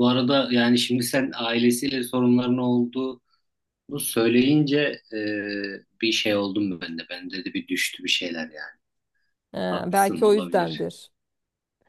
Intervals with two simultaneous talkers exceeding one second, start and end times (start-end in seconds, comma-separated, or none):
9.7-10.9